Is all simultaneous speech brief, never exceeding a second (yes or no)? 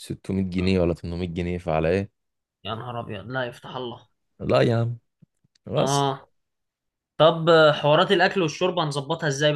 yes